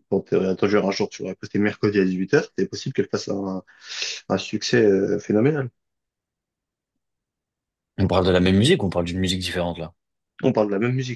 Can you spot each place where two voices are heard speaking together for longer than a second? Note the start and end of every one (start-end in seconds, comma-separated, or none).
none